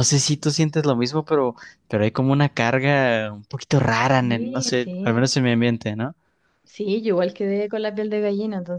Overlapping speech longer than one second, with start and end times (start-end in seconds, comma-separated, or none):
4.0-5.2